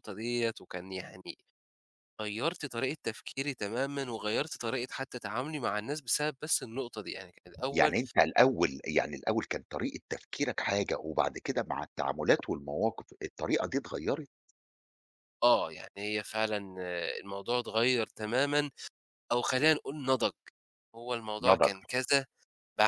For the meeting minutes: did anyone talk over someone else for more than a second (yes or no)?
no